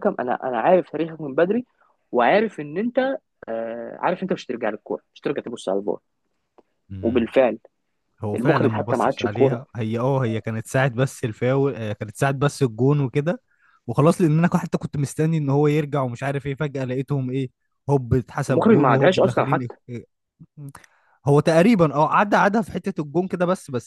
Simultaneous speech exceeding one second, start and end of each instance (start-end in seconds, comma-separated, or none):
8.3-9.6, 18.5-19.8